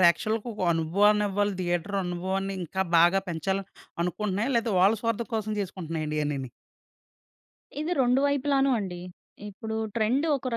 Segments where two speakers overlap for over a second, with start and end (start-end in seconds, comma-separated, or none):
none